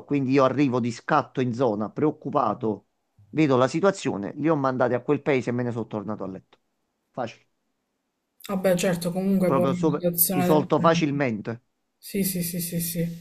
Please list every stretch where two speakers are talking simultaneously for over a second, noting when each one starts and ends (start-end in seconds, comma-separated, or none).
9.4-11.0